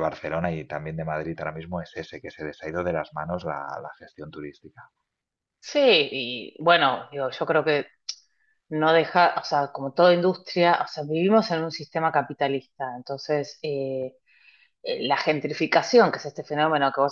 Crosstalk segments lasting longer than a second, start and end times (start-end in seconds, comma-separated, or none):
none